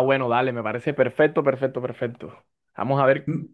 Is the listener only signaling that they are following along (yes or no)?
yes